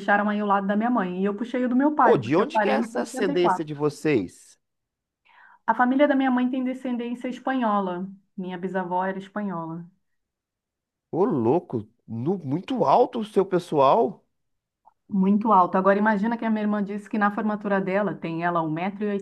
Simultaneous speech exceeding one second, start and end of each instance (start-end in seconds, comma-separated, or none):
2.0-3.7